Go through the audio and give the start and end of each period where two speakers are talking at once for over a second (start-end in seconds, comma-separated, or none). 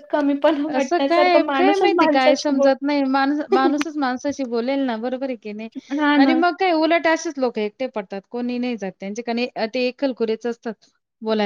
0.8-2.7